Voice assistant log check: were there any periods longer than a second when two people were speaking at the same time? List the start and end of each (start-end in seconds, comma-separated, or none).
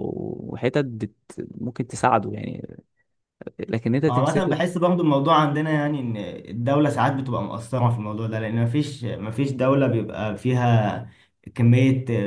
none